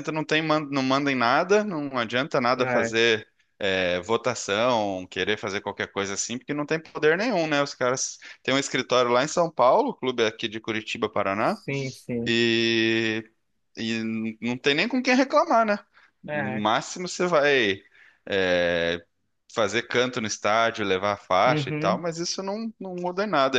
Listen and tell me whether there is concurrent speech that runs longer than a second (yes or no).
no